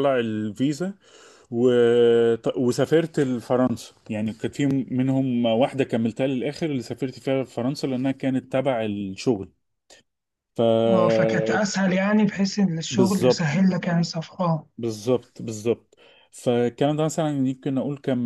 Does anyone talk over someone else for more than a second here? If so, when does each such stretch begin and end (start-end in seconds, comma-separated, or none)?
none